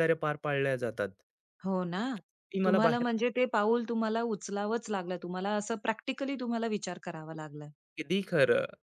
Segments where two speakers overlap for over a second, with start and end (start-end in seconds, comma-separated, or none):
none